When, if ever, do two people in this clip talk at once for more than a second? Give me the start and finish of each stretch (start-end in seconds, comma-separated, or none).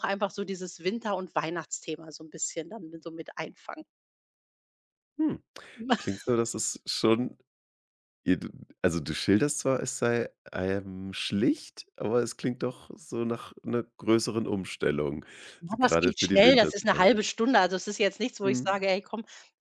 15.8-17.2